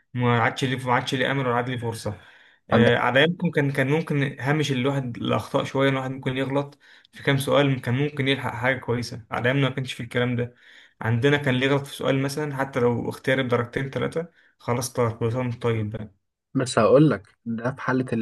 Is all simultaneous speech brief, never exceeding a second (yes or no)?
yes